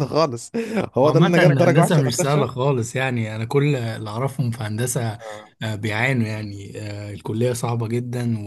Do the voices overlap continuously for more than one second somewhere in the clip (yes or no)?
yes